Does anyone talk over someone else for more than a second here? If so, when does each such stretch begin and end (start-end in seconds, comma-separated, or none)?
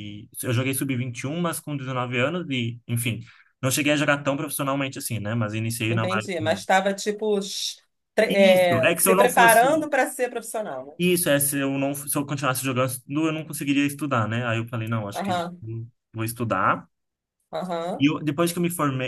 8.3-9.7